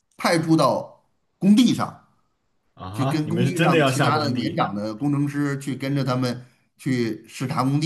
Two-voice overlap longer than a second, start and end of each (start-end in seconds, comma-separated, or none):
2.9-4.6